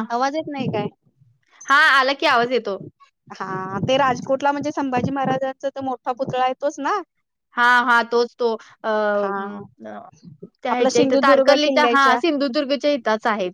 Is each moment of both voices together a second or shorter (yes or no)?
no